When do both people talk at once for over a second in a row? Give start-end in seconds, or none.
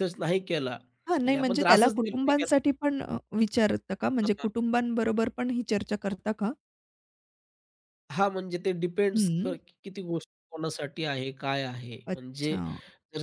1.3-2.7